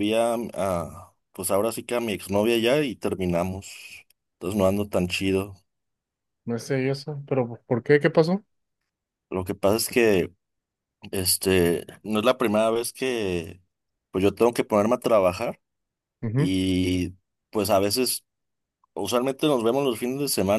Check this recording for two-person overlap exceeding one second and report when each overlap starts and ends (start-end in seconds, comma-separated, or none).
none